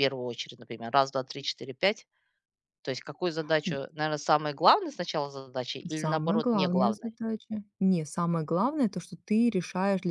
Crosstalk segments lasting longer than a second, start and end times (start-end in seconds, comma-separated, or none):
5.9-7.2